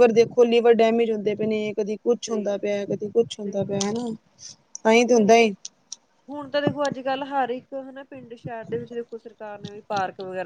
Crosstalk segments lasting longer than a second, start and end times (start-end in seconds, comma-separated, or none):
none